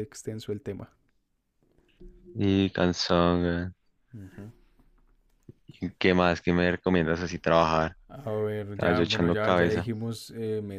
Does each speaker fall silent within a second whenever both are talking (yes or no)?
no